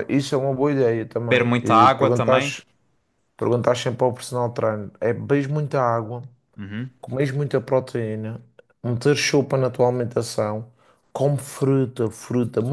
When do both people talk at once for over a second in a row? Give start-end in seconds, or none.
1.3-2.6